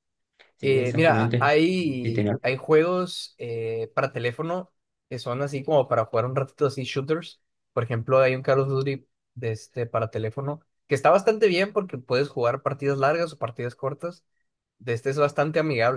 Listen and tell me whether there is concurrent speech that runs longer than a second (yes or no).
yes